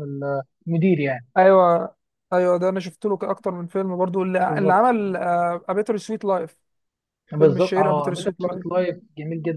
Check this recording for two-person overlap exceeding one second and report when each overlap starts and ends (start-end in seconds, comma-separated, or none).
7.4-8.7